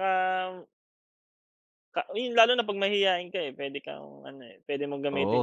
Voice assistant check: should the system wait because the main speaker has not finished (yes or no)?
no